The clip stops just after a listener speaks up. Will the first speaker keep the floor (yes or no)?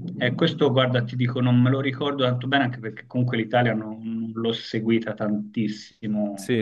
no